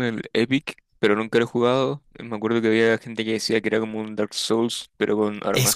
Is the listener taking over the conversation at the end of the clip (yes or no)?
yes